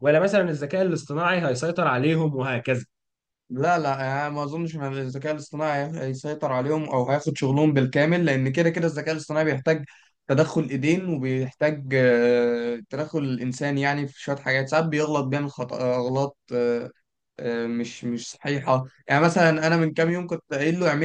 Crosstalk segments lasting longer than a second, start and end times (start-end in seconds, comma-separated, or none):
none